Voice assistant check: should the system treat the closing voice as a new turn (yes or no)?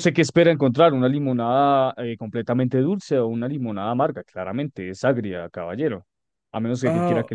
yes